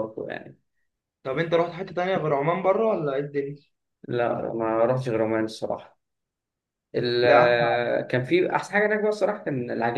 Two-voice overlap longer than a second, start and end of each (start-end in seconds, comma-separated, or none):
none